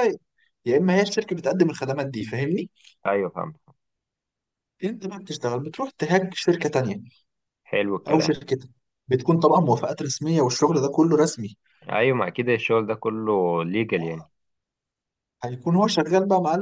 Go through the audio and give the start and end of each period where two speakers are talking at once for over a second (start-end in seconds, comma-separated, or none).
none